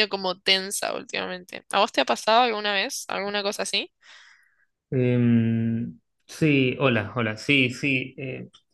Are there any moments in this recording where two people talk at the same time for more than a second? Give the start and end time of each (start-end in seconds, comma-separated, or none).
none